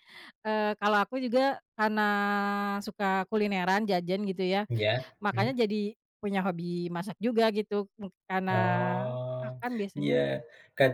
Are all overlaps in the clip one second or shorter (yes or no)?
yes